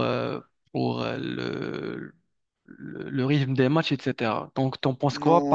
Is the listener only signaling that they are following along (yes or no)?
no